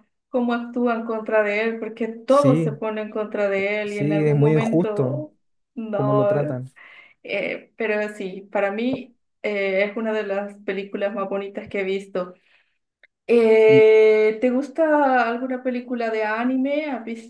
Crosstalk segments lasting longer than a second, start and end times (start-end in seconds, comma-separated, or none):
3.9-5.2